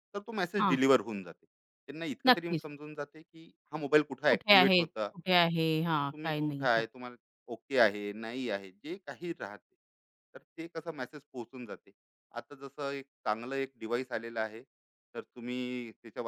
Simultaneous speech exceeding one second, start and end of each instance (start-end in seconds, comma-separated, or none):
4.3-6.8